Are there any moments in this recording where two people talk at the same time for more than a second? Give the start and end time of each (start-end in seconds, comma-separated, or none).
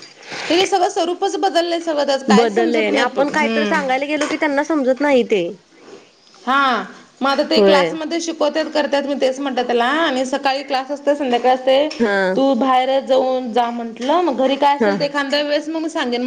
none